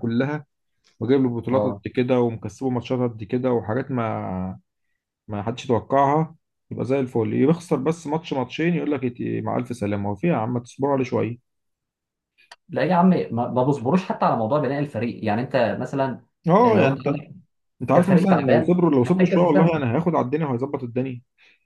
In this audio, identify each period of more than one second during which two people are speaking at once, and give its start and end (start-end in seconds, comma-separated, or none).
17.9-19.7